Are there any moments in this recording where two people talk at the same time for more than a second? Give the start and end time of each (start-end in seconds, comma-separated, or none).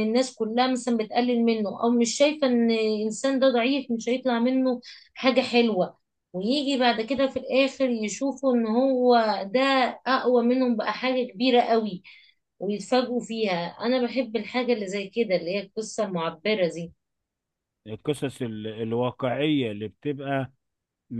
none